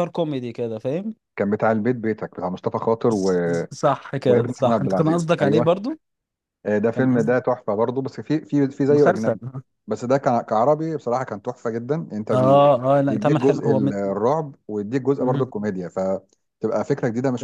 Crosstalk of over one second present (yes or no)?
yes